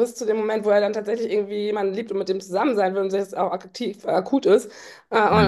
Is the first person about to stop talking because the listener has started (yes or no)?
no